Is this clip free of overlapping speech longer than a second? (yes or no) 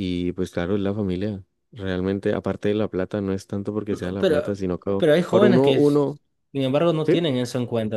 no